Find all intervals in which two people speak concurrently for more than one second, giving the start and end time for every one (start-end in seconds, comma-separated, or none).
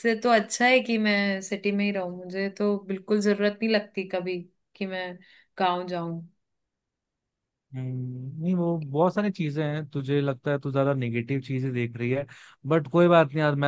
none